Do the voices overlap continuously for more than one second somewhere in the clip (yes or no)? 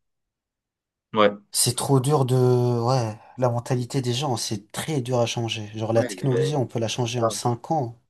yes